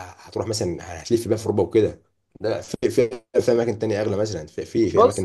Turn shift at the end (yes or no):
no